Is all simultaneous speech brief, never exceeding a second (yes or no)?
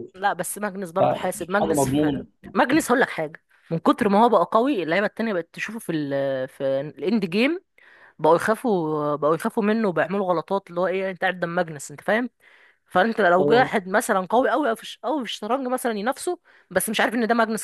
no